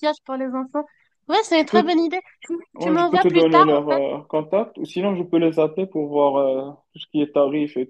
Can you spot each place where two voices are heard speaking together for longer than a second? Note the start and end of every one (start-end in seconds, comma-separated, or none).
2.8-4.0